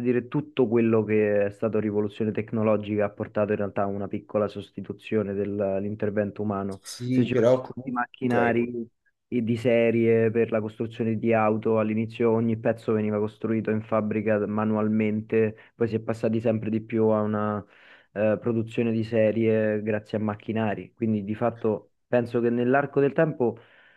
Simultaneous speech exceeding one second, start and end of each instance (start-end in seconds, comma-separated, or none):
6.8-8.6